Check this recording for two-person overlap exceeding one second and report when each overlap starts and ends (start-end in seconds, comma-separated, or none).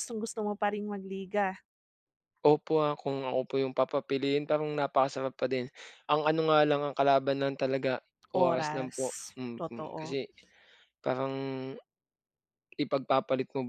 8.3-10.2